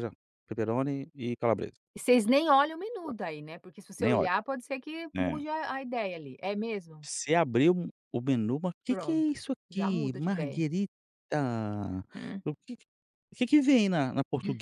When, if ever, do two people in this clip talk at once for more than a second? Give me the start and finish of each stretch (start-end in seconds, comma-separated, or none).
8.9-10.6